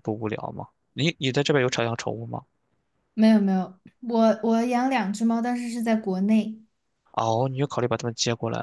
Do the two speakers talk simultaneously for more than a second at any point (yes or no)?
no